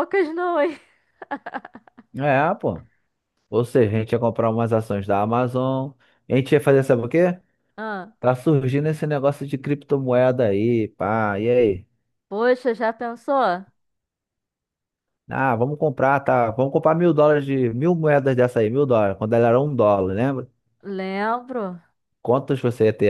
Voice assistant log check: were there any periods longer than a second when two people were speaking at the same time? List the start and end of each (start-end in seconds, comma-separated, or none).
none